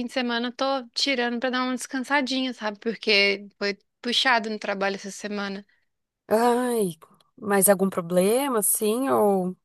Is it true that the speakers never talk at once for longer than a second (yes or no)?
yes